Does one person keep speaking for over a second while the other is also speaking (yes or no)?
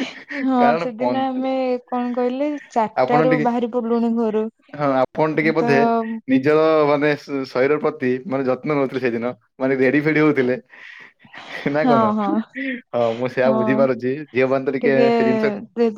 no